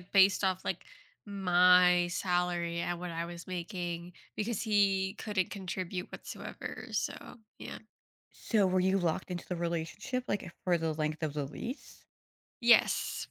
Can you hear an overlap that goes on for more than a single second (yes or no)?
no